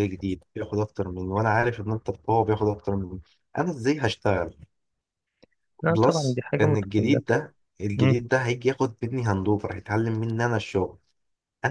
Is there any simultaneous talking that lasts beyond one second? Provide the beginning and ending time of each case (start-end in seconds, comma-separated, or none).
5.9-7.2